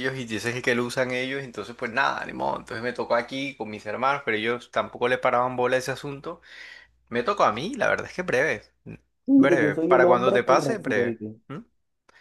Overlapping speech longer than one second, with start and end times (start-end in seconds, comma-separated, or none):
9.4-11.4